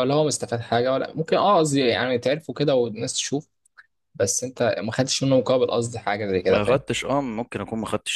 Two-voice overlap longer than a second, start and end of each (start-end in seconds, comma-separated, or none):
none